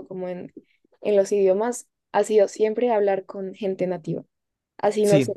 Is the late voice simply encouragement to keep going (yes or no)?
yes